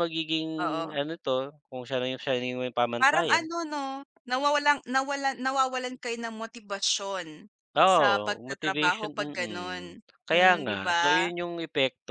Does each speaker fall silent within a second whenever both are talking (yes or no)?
no